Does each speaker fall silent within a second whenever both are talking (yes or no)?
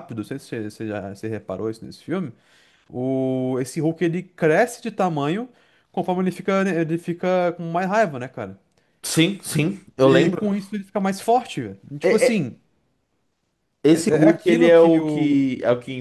no